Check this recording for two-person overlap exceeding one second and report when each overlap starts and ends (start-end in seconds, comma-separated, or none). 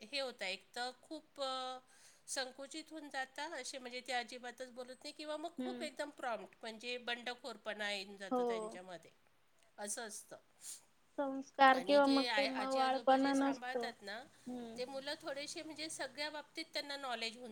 11.8-13.9